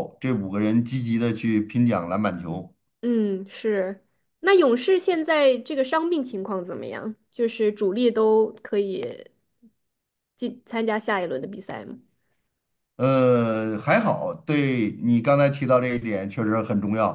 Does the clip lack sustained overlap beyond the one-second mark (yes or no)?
yes